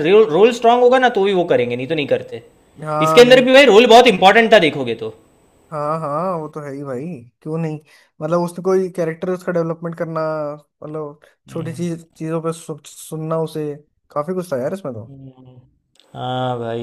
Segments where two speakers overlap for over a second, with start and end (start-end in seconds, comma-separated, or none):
none